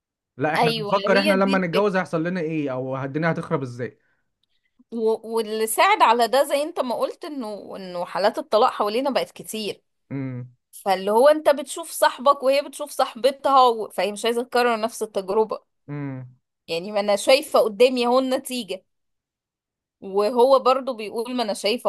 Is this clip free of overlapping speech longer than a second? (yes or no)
no